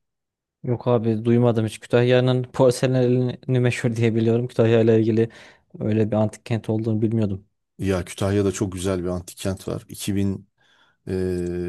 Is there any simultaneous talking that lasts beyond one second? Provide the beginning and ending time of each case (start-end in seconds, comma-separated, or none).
none